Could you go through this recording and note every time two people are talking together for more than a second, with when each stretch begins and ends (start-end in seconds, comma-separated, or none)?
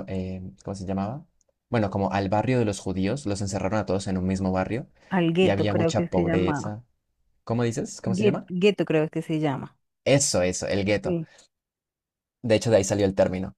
5.4-6.7